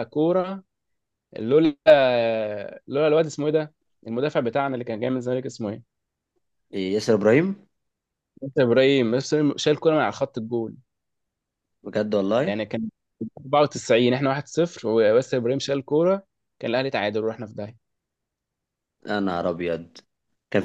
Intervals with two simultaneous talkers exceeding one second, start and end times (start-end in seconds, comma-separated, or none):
none